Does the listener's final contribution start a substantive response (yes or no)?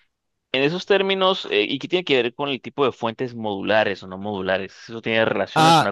yes